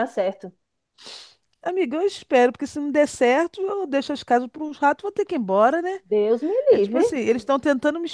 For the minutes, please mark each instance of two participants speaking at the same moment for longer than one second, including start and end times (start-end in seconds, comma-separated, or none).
none